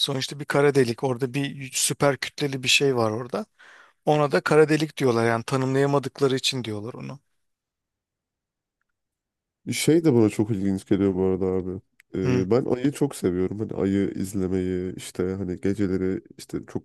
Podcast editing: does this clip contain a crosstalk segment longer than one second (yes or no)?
no